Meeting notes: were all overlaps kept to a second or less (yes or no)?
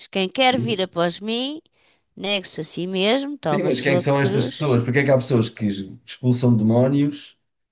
no